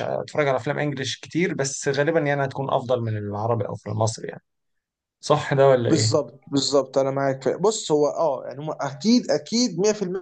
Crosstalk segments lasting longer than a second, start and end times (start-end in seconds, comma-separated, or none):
none